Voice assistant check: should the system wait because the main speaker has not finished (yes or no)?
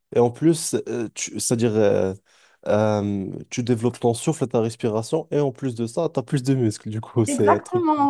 no